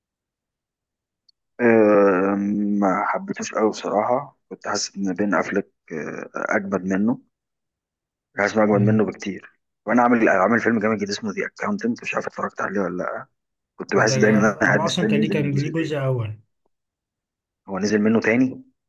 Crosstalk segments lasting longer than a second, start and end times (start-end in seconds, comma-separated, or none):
14.0-16.1